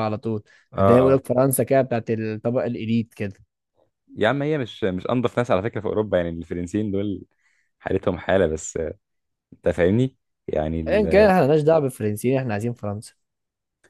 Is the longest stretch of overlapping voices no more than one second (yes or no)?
yes